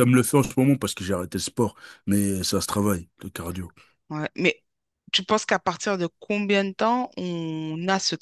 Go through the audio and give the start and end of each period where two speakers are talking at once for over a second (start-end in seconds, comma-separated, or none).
none